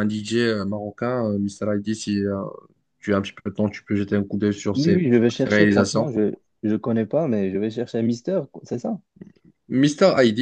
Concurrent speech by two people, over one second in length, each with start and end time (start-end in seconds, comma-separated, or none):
4.7-6.1